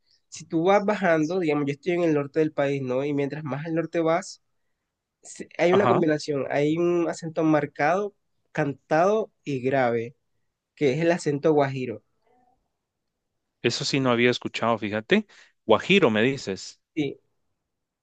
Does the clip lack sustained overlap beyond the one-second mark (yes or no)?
yes